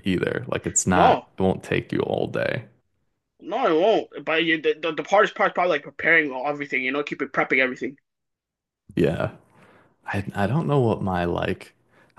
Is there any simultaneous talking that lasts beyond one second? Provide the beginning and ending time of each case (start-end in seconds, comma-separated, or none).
none